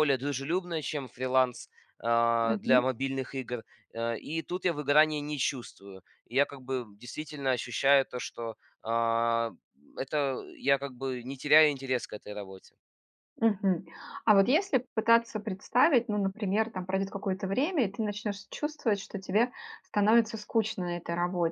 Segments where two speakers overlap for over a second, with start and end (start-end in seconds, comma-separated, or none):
none